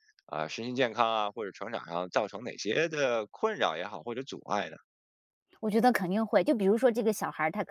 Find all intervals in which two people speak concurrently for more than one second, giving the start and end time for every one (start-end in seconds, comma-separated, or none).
none